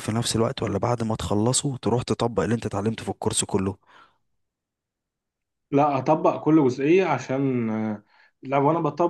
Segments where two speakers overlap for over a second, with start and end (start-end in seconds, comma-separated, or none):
none